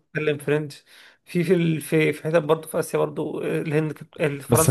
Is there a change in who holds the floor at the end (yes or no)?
yes